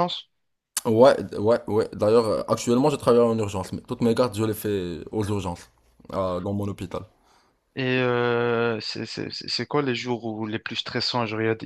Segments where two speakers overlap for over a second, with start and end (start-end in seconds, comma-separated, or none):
none